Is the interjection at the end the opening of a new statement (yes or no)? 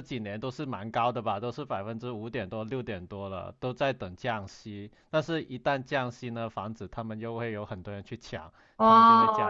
yes